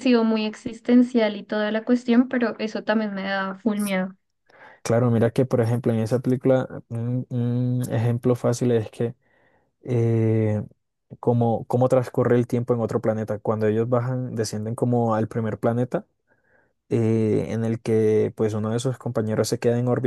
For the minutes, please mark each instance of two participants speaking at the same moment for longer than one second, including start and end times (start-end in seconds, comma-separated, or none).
none